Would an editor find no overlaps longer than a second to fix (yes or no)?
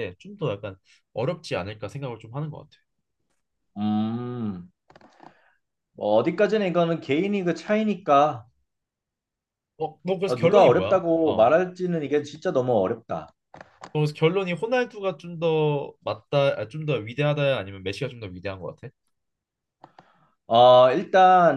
no